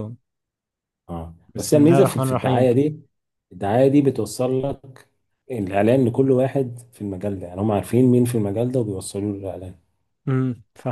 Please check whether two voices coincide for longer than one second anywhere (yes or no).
yes